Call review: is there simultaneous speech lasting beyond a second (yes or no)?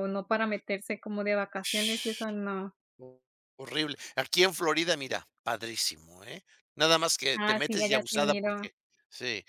yes